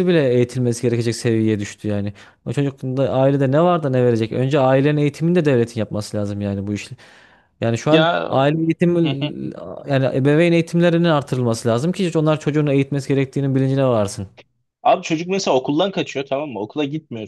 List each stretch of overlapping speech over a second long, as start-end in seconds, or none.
none